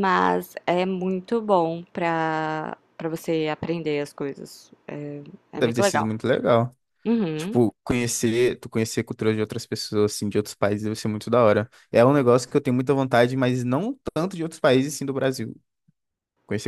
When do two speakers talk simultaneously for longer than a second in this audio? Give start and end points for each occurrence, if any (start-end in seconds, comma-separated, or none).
none